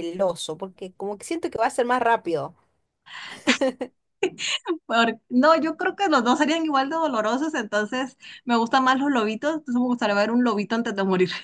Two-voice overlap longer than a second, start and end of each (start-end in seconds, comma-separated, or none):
none